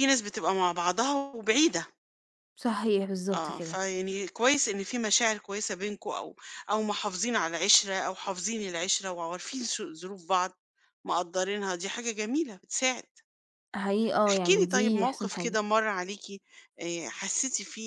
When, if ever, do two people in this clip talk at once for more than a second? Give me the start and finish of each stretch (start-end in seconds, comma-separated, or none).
14.3-15.6